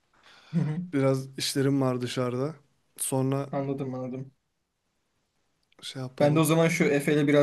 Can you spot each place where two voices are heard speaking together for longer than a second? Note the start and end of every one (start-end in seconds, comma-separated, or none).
none